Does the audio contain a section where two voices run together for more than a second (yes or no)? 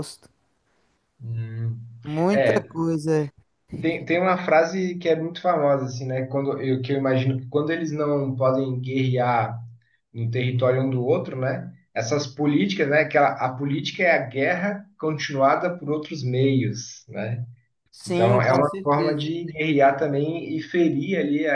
yes